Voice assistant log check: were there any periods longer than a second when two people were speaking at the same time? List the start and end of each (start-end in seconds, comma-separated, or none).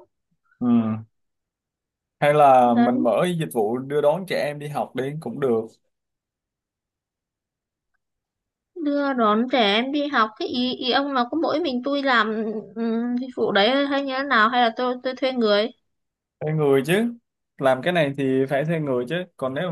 none